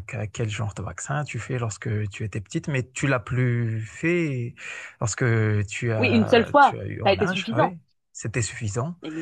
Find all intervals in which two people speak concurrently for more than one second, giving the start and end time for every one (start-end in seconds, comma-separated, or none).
6.0-7.7